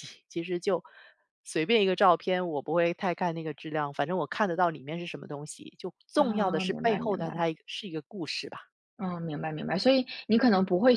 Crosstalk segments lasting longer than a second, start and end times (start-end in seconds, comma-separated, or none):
6.1-7.5